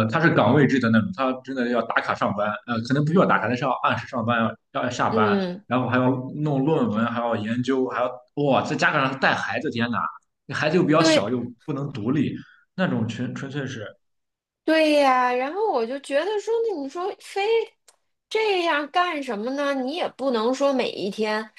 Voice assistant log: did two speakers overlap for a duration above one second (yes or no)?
no